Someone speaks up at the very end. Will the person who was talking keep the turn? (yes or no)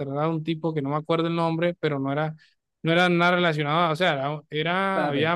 no